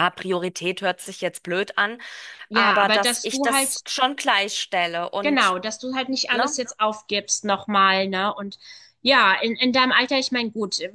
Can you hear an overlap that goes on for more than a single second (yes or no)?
yes